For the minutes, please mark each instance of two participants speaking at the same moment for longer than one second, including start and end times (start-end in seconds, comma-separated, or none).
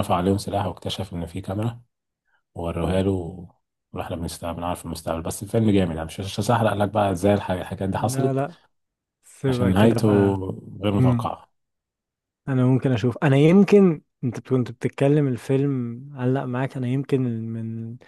none